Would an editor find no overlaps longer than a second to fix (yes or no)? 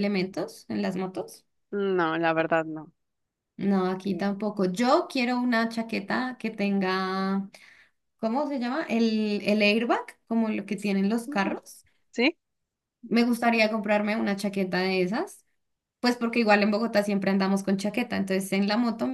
yes